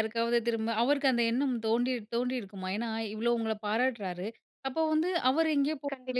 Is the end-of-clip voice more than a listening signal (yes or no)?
no